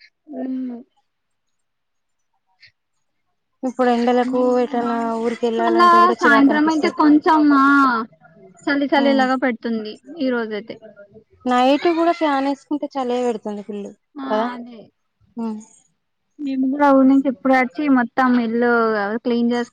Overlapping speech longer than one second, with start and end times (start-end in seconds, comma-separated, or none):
4.8-7.0